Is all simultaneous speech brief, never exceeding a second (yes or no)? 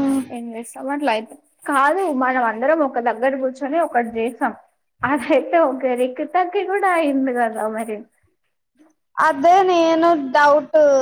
yes